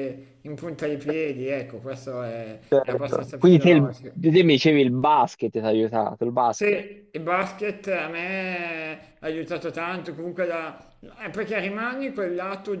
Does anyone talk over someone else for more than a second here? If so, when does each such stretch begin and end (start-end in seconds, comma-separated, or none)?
2.7-4.2